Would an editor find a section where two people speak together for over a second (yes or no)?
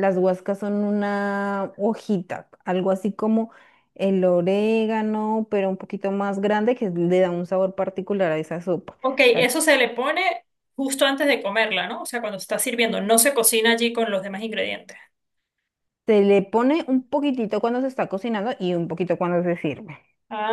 no